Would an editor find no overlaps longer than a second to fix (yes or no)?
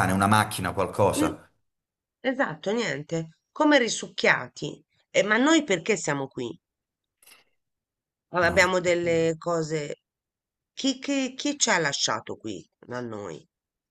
yes